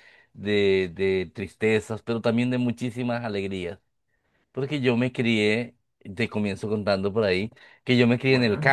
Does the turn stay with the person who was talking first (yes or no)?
yes